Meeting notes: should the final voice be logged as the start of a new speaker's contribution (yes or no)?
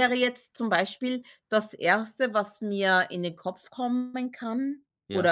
no